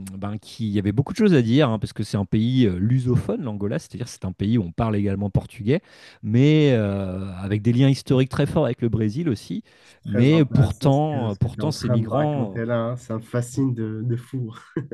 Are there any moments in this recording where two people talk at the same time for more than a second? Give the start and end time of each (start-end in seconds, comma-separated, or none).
10.1-12.6